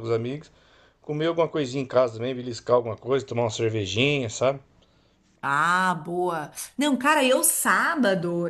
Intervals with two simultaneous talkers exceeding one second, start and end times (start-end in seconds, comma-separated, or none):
none